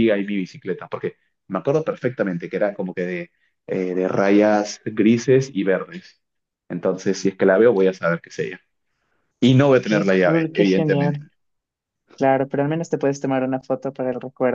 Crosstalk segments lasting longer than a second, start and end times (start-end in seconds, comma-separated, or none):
9.8-11.2